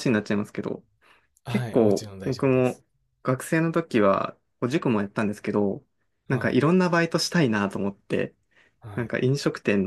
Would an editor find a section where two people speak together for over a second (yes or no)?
yes